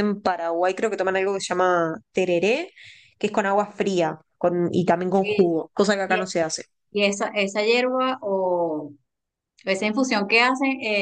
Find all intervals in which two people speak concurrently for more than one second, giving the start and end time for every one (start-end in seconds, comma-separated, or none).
none